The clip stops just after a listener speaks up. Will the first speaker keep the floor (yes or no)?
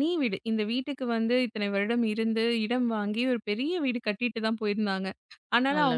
yes